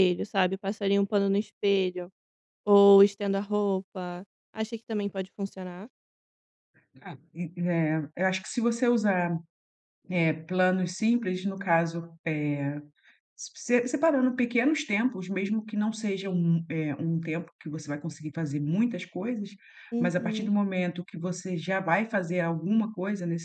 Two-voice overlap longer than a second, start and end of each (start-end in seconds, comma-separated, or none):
none